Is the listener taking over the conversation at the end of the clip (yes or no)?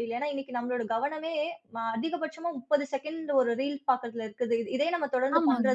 no